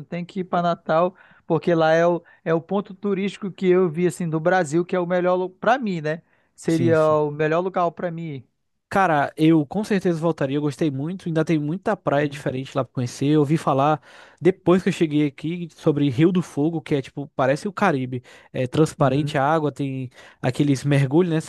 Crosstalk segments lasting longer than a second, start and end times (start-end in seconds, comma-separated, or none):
none